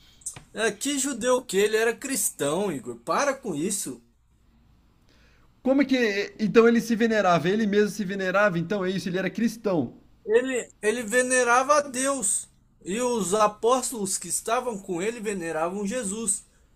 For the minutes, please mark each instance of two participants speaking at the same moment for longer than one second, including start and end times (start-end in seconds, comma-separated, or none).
none